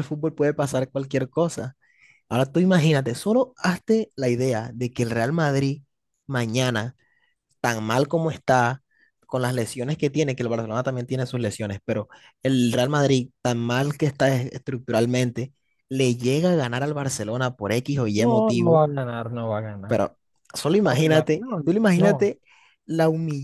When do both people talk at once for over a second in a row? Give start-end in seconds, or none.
20.8-22.3